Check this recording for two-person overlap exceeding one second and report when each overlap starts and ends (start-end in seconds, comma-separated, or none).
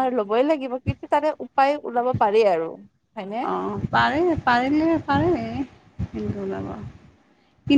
none